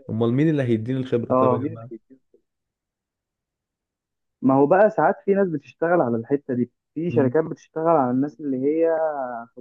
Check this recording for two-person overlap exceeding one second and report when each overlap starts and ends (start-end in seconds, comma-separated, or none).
none